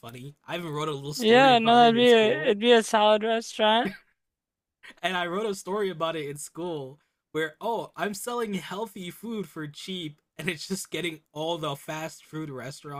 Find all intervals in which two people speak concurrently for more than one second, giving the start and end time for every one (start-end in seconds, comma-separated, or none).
1.2-2.6